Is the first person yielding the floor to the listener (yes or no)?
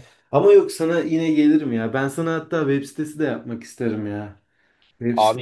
yes